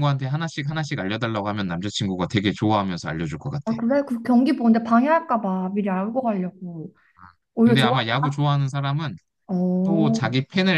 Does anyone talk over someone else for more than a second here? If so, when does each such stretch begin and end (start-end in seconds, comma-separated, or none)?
none